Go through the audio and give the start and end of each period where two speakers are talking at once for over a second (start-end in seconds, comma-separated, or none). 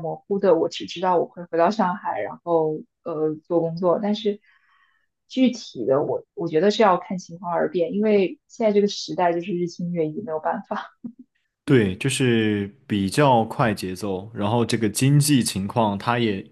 none